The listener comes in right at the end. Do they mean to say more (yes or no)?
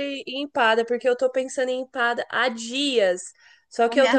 no